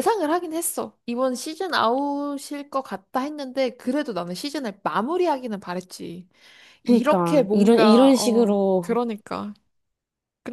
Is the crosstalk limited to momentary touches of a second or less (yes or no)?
no